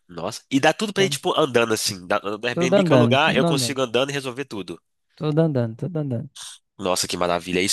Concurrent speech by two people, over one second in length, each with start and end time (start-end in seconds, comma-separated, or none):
2.5-3.8